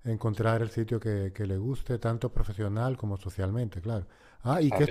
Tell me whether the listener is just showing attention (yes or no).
no